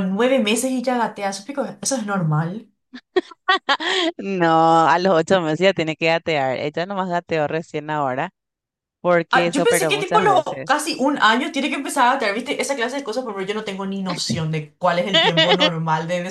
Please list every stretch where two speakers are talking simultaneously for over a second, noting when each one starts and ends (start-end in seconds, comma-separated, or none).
9.3-10.7